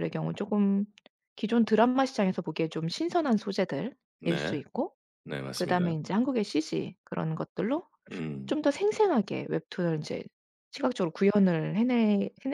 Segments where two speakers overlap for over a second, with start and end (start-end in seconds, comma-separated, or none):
none